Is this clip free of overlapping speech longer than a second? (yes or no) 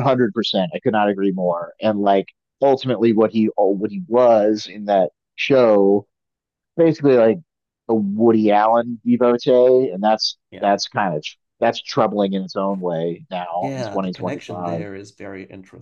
no